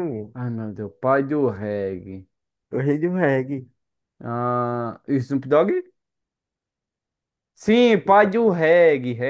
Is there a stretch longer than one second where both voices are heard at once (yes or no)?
no